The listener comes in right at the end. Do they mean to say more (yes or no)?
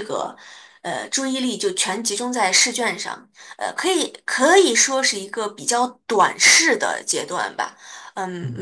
no